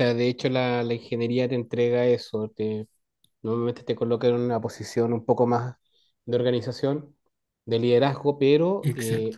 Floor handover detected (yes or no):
no